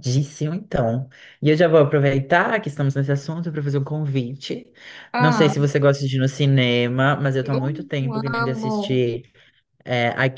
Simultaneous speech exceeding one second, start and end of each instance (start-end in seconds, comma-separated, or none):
7.4-9.1